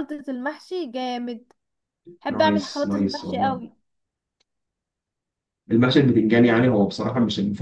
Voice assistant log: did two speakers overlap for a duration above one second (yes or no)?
yes